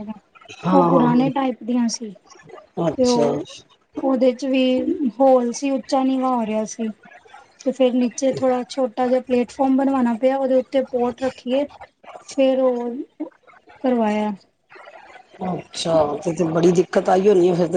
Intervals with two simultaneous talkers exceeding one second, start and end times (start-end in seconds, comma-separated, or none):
none